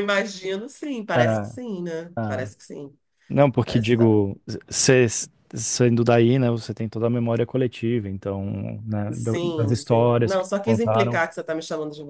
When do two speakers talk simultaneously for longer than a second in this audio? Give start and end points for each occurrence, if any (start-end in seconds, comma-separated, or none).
9.1-11.2